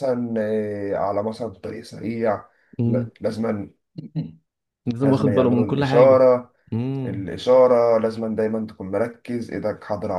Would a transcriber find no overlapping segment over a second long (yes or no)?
no